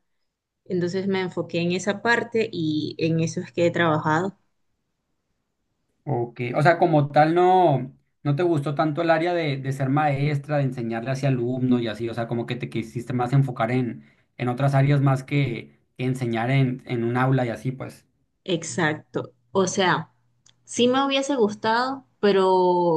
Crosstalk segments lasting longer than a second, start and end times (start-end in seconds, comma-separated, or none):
none